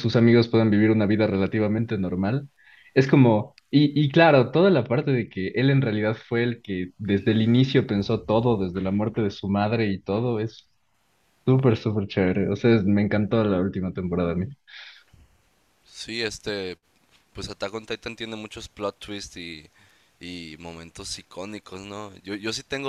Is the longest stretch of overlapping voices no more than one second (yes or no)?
yes